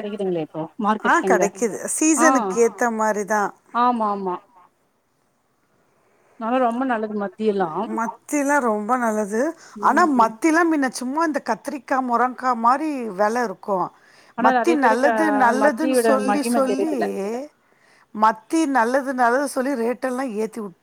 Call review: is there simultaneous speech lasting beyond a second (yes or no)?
yes